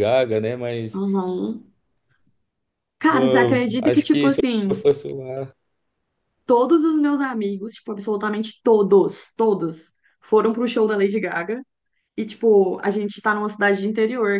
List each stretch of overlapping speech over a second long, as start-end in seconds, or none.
3.1-4.7